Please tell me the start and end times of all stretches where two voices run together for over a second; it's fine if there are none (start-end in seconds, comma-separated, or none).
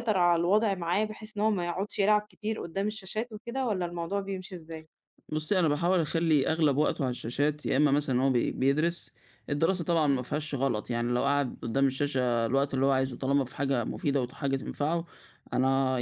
none